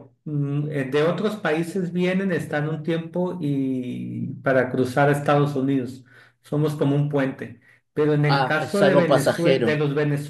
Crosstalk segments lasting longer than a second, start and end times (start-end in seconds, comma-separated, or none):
8.3-9.8